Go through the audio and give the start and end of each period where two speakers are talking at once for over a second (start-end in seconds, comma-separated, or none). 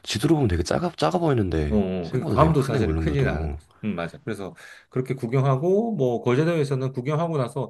1.7-3.6